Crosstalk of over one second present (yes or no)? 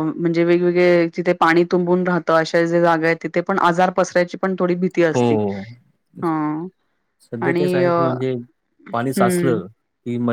no